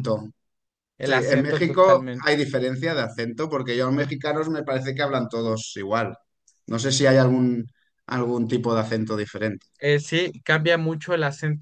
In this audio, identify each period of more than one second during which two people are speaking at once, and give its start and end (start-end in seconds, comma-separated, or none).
1.0-2.3